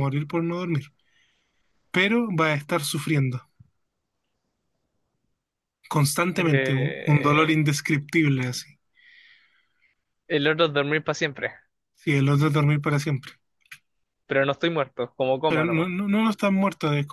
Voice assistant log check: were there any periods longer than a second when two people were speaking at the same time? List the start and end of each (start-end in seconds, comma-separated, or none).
6.4-7.6